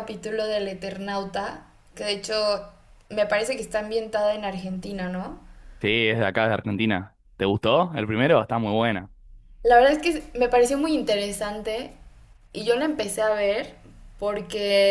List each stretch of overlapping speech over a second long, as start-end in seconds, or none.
none